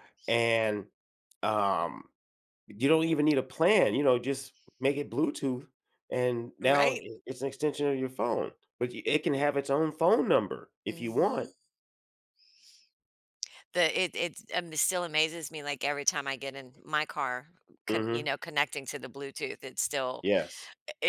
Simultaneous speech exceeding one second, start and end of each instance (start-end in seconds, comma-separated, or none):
none